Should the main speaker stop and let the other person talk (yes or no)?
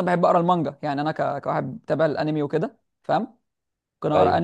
no